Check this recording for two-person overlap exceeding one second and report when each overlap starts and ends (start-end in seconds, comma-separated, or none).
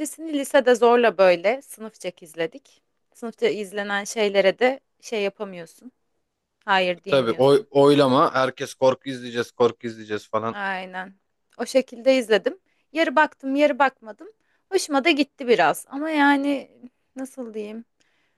none